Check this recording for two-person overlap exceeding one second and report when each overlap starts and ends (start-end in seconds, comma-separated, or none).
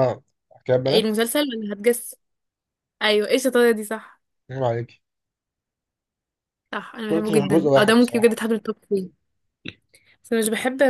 7.1-8.4